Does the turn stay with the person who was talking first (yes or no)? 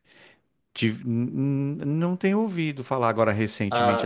no